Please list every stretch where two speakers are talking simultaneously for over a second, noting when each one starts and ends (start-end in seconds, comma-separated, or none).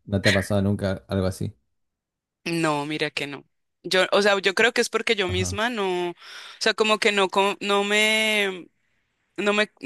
none